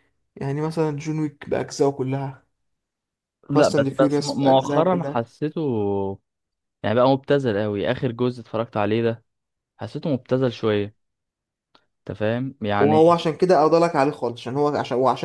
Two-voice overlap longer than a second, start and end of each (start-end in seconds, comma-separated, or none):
3.5-5.2